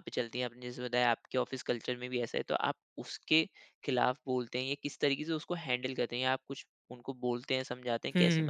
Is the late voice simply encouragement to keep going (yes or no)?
no